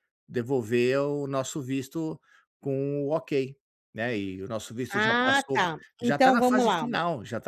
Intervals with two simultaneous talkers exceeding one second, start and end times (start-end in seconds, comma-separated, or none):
4.9-6.9